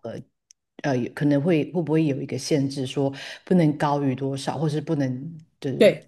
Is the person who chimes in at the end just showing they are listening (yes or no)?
no